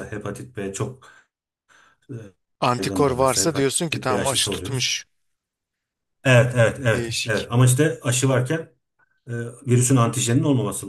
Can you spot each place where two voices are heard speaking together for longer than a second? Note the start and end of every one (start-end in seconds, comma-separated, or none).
2.8-4.9